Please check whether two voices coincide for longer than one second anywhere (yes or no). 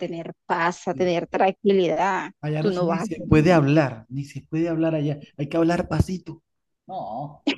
yes